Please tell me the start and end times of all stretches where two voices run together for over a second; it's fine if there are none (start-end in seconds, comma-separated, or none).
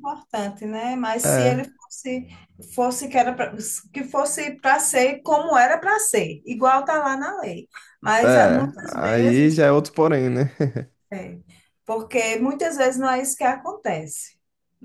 8.2-9.6